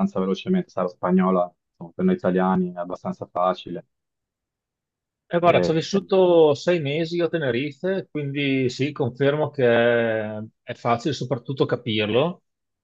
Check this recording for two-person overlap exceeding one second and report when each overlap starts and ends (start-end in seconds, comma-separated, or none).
none